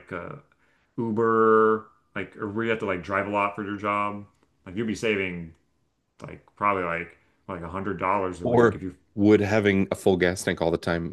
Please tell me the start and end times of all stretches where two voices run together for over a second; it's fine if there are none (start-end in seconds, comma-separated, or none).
none